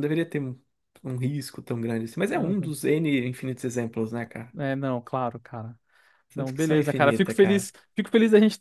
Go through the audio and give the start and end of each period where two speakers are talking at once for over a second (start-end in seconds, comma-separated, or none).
6.3-7.7